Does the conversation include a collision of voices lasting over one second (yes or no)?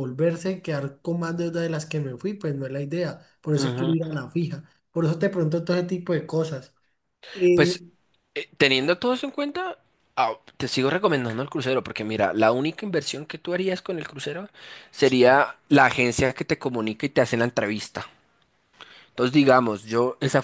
no